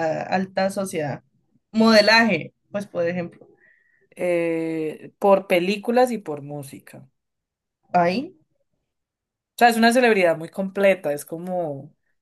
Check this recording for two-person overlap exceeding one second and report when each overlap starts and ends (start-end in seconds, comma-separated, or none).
none